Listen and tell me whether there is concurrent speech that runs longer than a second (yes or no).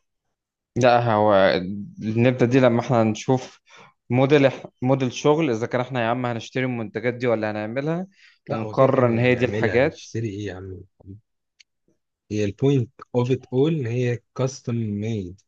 yes